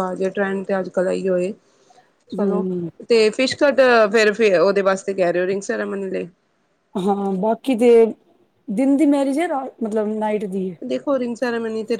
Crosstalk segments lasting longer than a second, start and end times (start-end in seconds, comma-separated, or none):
none